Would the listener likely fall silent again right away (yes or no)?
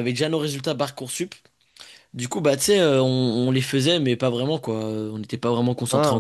no